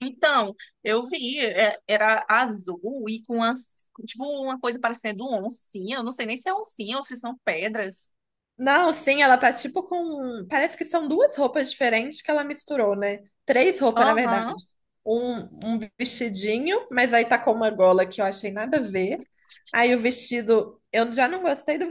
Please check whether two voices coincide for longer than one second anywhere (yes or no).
no